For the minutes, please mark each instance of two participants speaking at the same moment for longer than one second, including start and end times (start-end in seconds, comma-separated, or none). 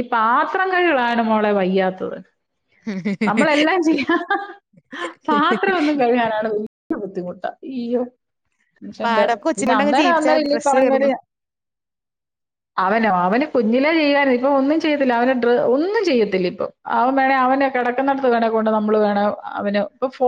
9.0-11.1